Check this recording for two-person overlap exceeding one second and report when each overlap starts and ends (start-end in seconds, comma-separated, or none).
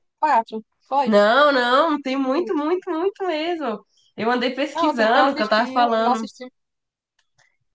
4.7-6.3